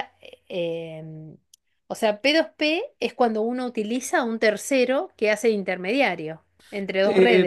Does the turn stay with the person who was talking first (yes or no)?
no